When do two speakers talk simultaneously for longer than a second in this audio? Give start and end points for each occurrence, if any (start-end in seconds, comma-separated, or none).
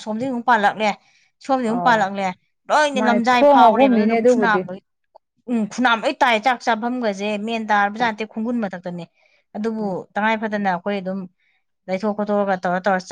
3.0-4.6